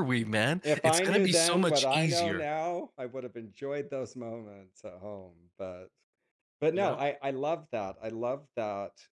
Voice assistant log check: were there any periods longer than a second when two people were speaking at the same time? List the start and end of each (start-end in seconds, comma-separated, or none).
0.6-2.5